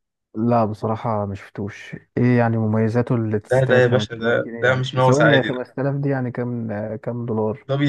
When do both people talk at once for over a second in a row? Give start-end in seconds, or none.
3.5-5.5